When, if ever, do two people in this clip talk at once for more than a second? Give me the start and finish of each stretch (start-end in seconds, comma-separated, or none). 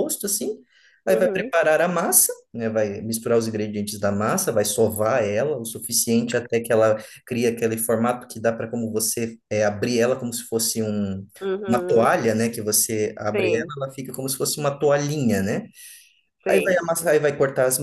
none